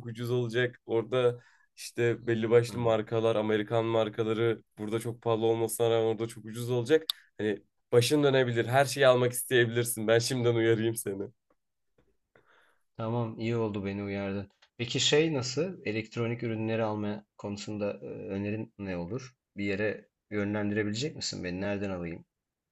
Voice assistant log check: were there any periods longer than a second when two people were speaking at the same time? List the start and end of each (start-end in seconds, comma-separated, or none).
none